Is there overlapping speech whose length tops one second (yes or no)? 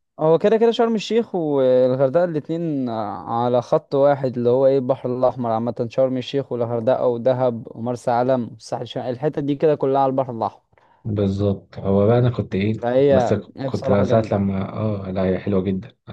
yes